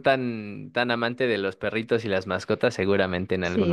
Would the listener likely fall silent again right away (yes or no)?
no